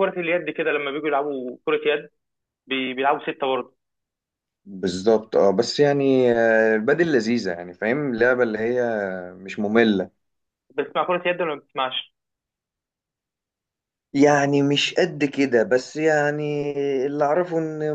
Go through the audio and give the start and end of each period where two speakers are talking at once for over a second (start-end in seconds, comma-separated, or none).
none